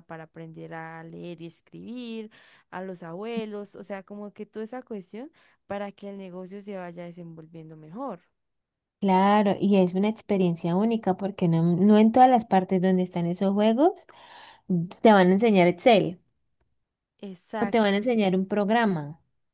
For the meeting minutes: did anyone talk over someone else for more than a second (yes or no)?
no